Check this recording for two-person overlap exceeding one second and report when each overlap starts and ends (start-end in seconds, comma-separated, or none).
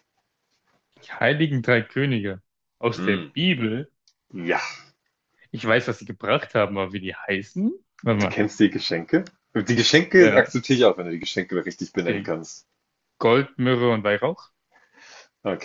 none